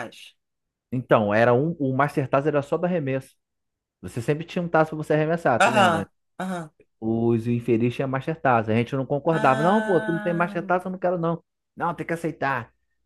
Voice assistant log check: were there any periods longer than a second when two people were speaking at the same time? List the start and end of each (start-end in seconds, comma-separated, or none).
9.3-10.6